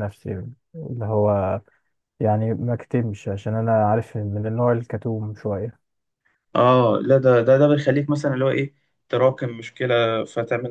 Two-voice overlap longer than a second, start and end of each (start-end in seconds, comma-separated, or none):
none